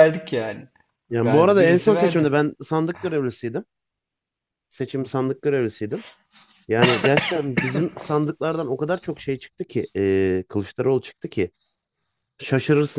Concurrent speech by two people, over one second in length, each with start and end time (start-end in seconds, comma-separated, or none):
1.1-2.4